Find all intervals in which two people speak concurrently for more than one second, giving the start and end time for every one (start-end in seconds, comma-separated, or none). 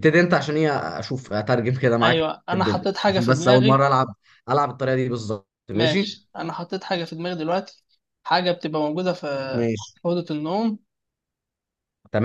2.0-3.8